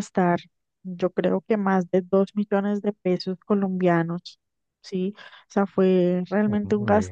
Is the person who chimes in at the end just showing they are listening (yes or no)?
yes